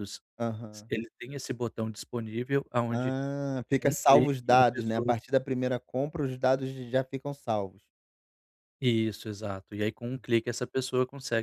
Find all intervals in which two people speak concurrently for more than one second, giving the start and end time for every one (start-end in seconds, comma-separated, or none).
3.8-5.1